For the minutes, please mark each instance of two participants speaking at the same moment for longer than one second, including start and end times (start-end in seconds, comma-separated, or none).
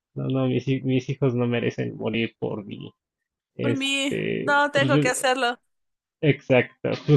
3.6-5.1